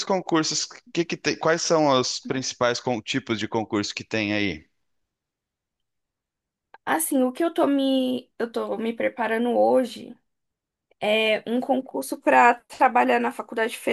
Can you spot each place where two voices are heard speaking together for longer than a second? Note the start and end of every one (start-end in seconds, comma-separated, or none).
none